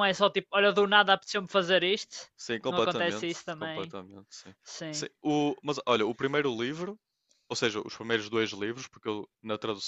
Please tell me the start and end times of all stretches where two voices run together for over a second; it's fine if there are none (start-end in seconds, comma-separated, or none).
2.7-3.9